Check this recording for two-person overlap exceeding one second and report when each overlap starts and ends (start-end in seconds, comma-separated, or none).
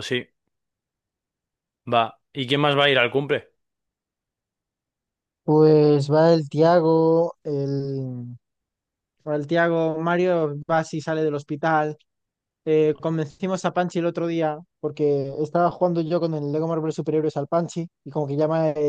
none